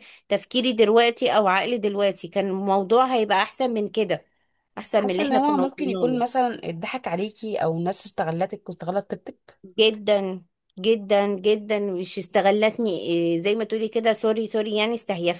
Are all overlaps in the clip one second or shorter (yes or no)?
no